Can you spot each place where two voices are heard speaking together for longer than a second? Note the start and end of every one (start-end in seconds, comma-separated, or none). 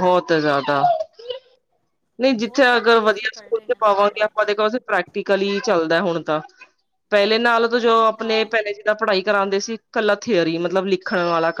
2.4-4.3